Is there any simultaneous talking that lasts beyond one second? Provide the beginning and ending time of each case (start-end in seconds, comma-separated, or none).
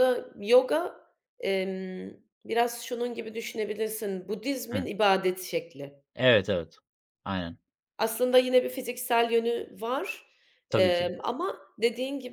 none